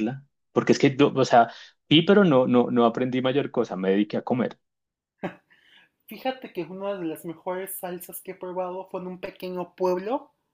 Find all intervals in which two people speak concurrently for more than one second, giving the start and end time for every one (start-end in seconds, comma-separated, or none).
none